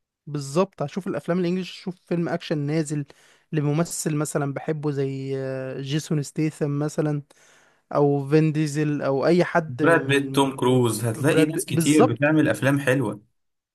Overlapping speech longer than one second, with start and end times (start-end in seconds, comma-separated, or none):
9.7-12.3